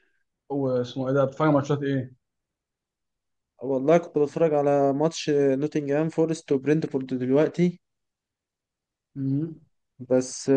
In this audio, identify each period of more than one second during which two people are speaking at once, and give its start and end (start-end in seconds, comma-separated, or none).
none